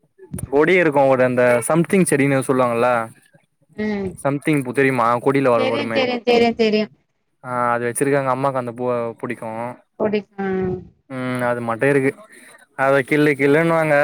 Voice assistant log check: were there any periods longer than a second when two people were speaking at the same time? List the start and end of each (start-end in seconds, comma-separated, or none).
none